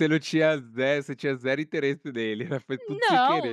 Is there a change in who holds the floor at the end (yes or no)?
yes